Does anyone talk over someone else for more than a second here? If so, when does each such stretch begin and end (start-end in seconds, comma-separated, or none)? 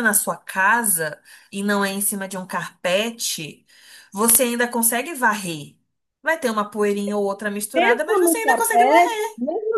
7.8-9.3